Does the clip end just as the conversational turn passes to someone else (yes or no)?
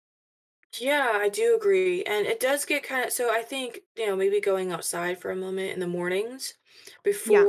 no